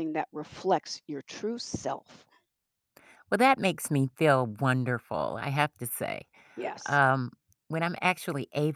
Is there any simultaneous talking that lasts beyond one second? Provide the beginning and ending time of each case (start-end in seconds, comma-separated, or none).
none